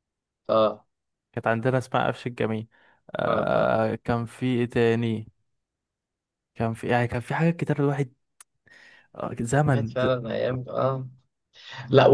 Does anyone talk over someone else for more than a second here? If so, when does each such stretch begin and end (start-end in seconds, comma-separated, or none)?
none